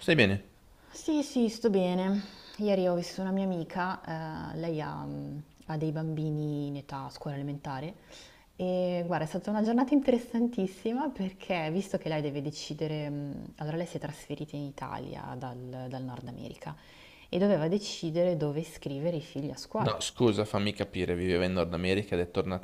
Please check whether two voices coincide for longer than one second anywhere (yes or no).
no